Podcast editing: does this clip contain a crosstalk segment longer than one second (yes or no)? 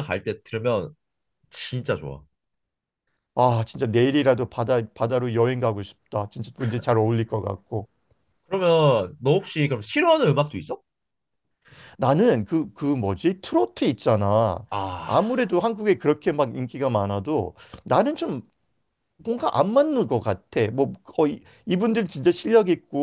no